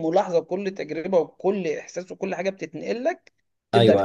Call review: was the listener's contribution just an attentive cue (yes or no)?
no